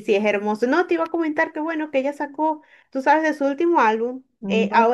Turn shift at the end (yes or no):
no